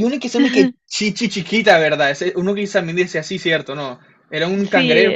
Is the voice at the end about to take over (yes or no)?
yes